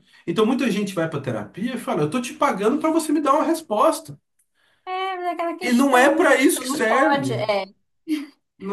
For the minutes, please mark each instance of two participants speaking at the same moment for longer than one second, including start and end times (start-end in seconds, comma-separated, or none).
5.6-7.5